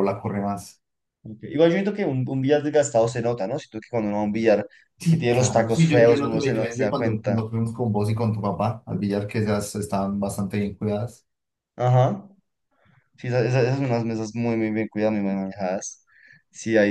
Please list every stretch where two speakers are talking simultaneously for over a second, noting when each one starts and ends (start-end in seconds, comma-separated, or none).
5.1-7.4